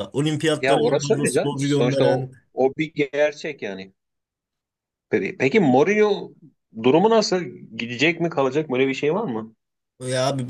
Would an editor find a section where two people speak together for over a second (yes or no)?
yes